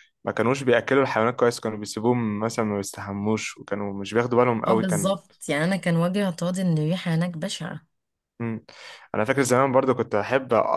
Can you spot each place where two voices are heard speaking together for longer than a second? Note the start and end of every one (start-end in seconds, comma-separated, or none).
none